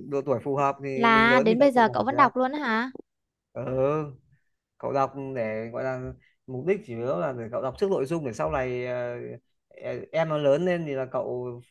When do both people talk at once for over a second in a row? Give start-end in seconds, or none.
0.9-2.2